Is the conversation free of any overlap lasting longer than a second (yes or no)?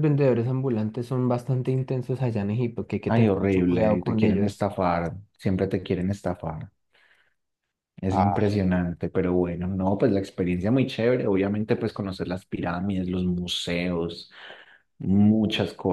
no